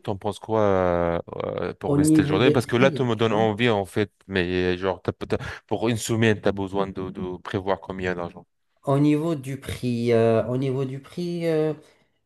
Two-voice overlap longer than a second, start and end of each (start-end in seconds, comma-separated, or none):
1.9-3.5